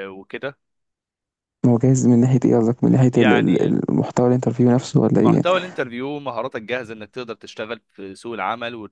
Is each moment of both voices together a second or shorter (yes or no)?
yes